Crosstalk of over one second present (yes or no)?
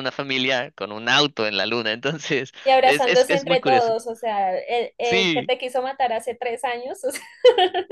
yes